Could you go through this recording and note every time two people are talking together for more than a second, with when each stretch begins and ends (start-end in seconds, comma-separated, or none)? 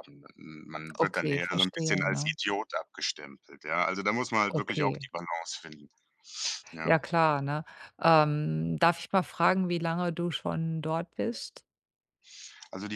1.0-2.3